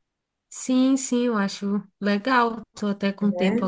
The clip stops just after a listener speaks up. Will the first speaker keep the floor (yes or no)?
yes